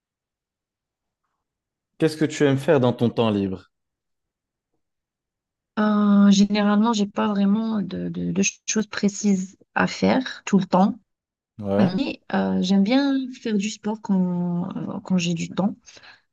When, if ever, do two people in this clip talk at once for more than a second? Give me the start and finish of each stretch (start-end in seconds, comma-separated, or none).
none